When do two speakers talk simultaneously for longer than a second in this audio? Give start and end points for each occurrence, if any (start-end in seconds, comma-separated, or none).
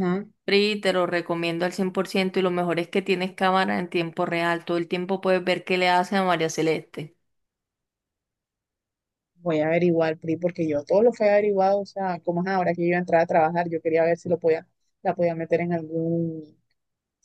none